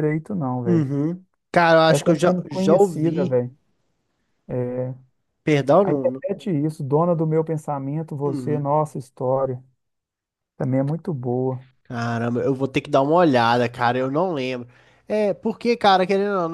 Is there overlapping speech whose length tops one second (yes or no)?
yes